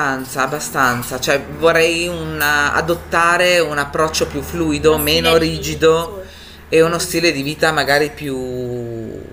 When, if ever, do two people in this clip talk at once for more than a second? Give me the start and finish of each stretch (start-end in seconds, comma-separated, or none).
4.8-6.1